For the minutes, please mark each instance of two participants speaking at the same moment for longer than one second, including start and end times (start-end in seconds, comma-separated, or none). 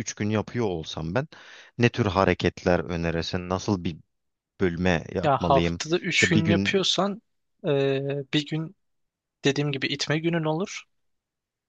5.2-6.8